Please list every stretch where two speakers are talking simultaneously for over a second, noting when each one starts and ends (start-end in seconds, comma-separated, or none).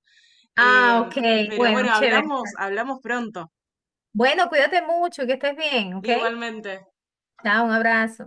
0.6-2.3